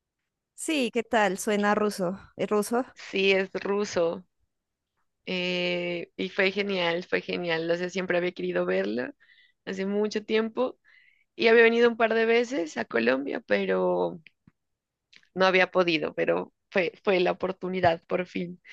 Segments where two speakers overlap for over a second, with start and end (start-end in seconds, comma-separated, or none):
none